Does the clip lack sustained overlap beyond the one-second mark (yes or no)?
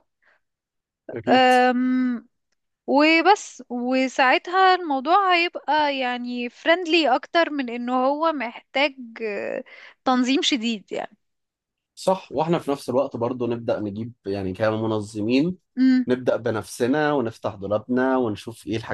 yes